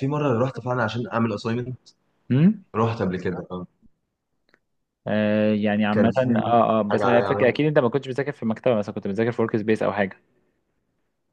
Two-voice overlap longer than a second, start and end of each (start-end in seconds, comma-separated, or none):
5.9-7.6